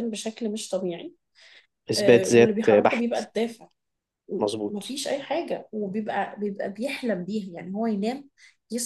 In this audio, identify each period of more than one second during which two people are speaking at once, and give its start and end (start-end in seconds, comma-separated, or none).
1.9-3.2